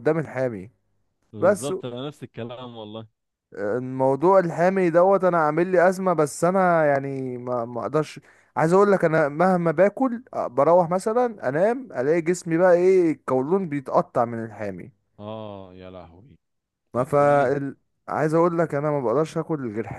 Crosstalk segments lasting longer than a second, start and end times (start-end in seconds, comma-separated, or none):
none